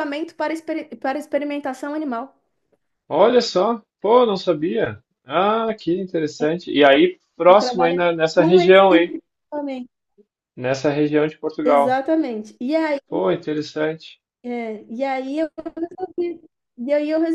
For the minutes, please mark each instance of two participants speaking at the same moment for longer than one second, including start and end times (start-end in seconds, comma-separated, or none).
7.5-9.2